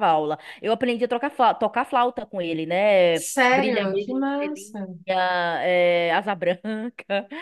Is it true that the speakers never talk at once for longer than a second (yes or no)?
no